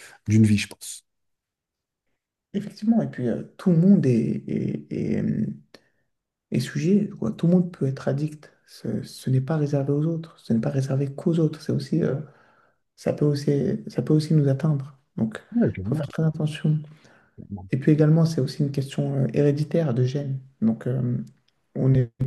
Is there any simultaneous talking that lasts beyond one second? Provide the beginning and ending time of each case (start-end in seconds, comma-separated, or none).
none